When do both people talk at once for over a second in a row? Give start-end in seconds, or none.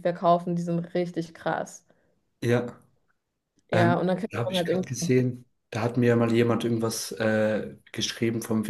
3.7-5.2